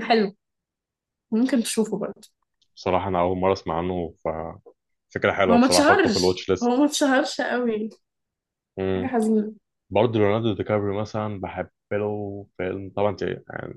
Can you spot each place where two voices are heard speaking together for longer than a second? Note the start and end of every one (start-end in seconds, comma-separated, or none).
5.5-6.8